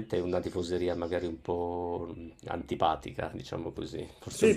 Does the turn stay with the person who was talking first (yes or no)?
no